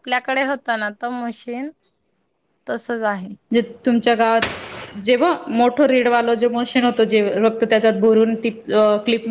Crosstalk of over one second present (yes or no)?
no